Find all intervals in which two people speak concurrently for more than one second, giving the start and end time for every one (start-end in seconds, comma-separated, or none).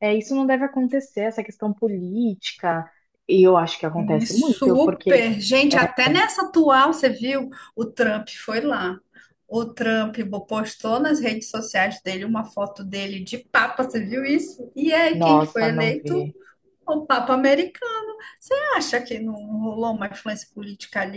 4.0-5.2, 15.1-16.3